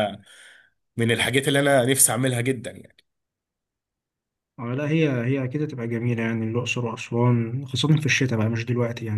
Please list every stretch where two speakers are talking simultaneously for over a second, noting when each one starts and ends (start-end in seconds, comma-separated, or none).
none